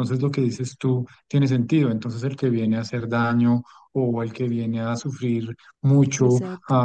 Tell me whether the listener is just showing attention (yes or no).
yes